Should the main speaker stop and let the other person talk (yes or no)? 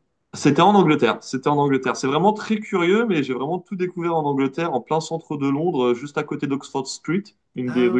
no